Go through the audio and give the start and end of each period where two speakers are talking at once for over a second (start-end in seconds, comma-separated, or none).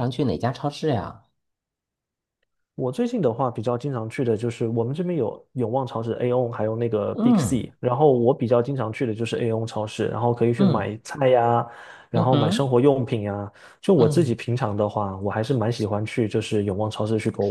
none